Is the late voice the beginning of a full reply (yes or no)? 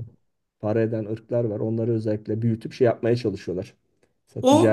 yes